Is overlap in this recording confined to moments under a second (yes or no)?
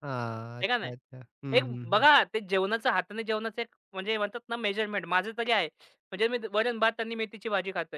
yes